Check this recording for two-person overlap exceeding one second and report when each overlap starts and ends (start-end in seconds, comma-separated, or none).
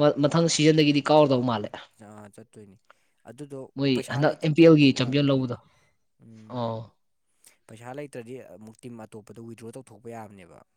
3.8-5.6